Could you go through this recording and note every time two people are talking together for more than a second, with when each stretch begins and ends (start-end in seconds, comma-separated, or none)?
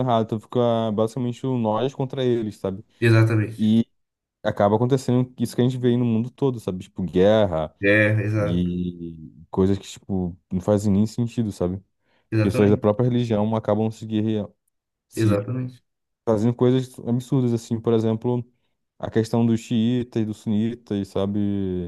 none